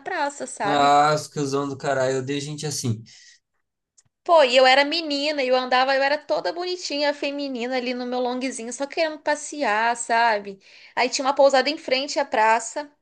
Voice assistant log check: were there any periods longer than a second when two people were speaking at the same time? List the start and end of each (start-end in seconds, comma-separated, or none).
none